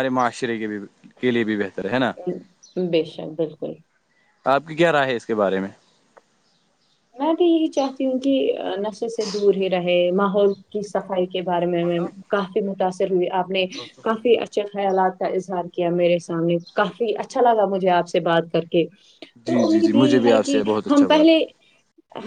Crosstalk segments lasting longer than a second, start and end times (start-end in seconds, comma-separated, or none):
19.5-21.3